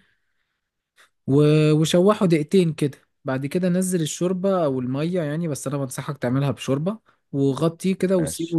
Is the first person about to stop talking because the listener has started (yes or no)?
no